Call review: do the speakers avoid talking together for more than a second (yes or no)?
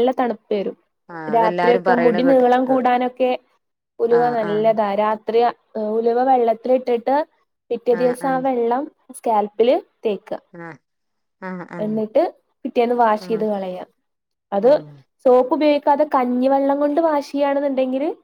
no